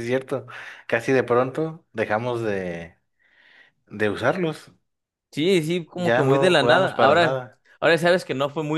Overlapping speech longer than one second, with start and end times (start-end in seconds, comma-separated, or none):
6.0-7.4